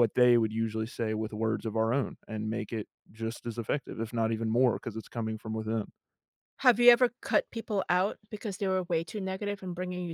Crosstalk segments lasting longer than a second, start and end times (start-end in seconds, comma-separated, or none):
none